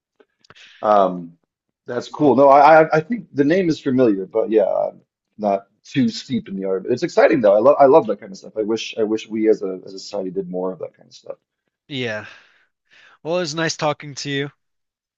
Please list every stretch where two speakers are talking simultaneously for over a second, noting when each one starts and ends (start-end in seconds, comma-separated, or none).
none